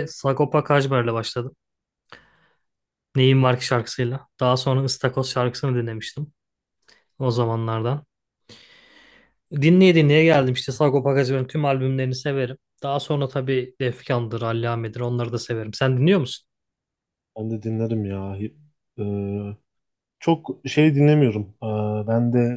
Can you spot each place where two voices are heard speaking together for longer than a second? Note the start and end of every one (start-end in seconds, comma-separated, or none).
none